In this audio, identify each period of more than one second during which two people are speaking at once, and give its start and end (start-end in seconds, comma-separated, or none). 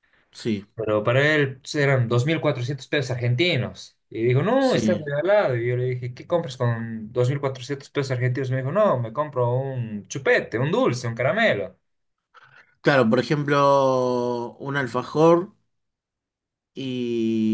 none